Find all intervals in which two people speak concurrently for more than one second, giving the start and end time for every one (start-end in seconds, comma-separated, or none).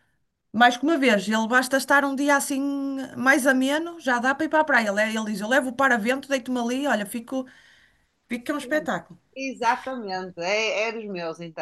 none